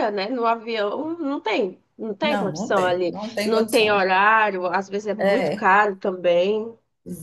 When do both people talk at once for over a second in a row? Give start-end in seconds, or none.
2.2-4.1